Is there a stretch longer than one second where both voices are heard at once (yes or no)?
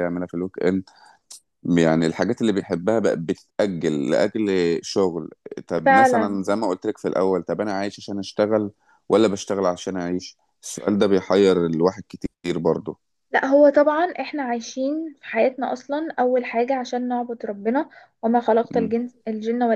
no